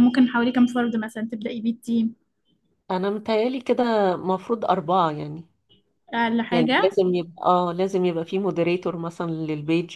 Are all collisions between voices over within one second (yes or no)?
yes